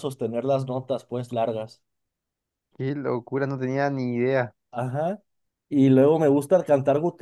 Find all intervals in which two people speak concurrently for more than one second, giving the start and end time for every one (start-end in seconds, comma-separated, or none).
none